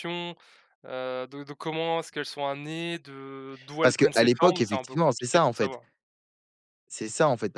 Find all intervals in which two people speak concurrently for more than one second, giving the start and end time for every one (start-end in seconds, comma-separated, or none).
3.8-5.8